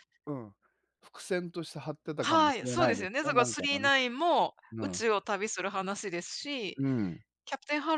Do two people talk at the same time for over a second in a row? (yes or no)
yes